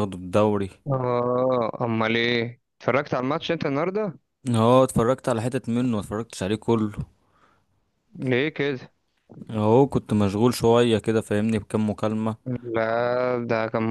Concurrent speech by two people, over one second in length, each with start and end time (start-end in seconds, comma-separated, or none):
none